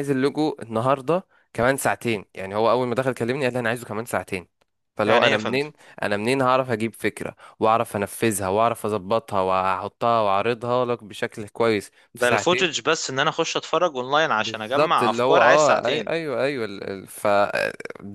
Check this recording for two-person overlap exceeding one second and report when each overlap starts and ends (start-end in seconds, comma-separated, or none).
14.4-16.1